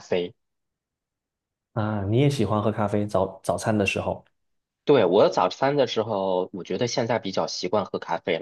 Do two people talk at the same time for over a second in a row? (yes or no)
no